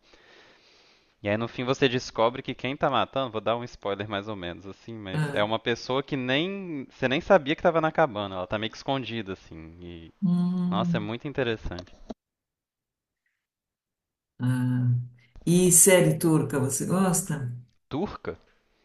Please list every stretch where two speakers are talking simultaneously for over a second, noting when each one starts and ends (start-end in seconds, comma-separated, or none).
none